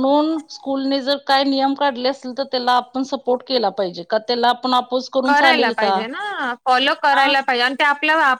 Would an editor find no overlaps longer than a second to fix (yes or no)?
yes